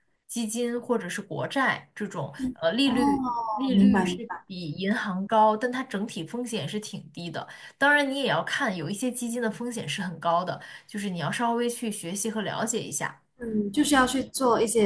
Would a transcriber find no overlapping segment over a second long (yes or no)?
no